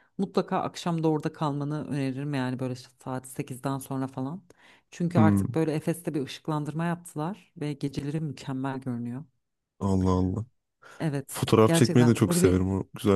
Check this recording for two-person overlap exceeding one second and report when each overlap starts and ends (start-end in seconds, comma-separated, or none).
11.3-12.6